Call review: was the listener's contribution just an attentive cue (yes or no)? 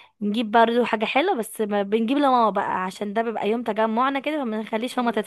yes